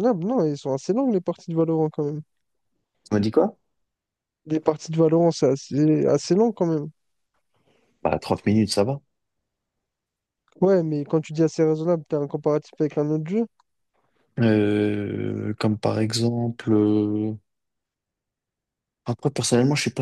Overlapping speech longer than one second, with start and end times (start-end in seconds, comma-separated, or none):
none